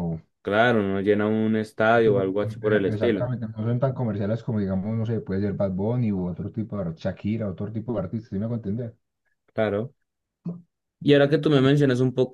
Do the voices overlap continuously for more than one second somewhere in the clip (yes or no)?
yes